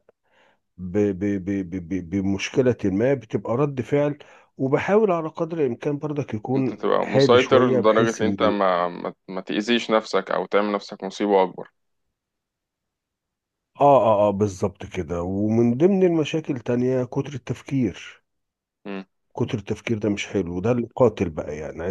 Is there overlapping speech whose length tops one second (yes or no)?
yes